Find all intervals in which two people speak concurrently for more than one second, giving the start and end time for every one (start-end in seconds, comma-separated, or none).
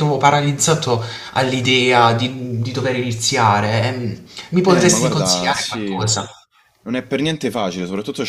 4.6-5.9